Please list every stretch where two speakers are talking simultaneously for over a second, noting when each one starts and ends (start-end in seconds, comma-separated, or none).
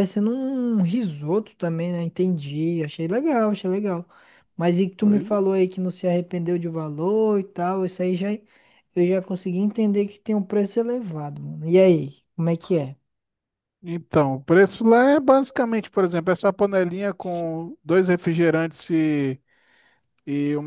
none